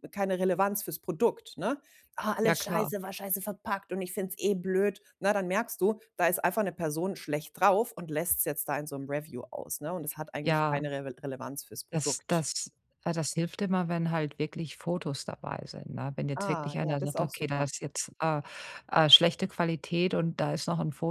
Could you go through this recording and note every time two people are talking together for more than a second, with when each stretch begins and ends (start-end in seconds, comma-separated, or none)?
16.4-17.7